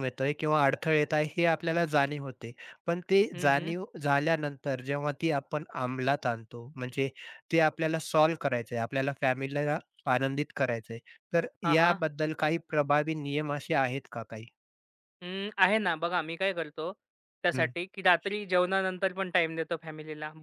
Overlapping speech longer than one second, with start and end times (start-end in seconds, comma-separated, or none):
none